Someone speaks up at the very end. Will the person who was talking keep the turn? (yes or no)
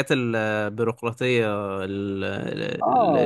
no